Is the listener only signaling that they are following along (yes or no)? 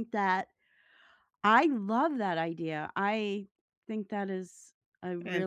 no